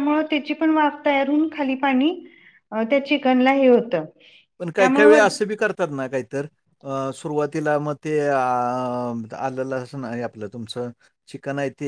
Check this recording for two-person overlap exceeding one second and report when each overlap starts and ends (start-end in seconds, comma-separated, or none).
none